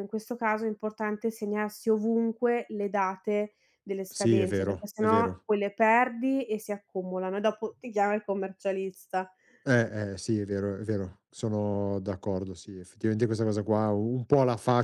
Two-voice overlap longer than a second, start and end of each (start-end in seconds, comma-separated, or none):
4.1-5.5